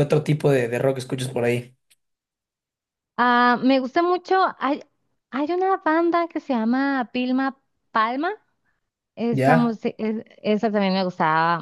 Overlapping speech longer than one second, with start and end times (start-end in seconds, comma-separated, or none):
none